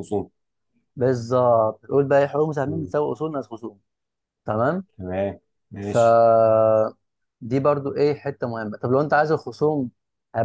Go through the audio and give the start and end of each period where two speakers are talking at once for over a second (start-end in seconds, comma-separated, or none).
none